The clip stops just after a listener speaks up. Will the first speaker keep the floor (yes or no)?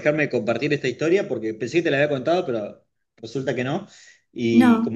yes